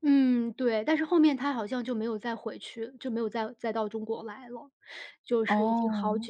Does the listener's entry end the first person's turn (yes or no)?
no